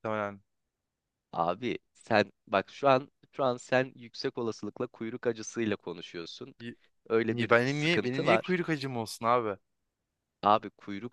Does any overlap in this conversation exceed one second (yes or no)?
yes